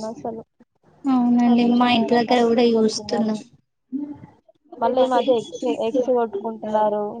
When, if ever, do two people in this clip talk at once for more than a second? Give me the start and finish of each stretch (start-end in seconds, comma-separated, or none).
1.5-3.3